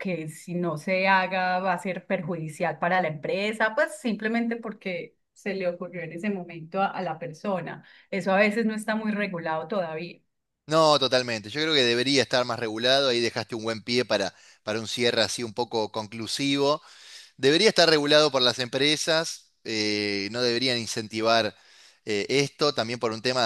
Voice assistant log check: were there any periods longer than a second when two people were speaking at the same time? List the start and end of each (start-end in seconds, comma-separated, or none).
none